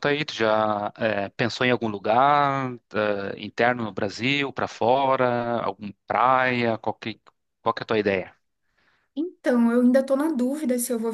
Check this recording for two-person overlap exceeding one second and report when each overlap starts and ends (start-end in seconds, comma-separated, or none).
none